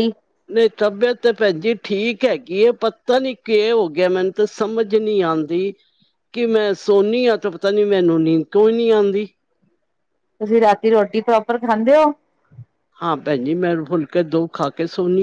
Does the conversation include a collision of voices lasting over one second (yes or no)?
no